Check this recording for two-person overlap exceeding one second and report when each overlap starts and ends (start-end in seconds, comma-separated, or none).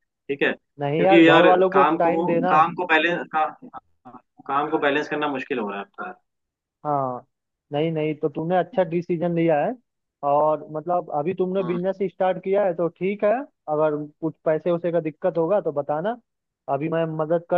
0.8-2.5